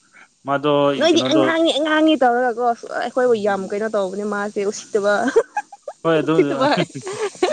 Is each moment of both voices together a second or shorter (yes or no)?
yes